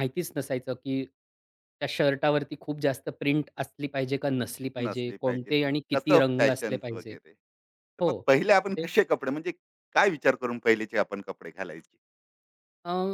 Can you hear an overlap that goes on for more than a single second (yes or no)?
yes